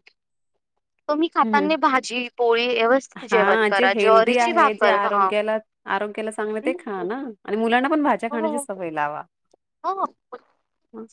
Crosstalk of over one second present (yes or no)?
yes